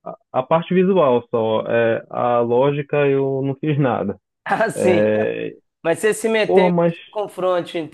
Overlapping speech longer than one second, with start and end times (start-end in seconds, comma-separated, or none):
none